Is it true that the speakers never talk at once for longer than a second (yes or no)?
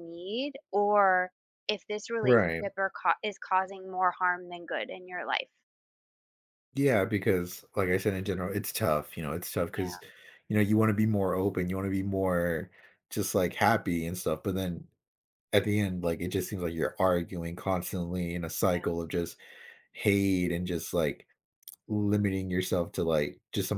yes